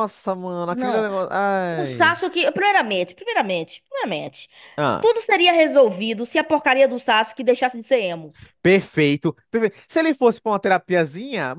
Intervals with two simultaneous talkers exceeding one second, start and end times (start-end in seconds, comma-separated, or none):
none